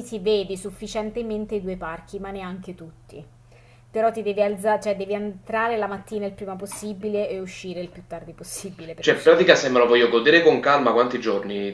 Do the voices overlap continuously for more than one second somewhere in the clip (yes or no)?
no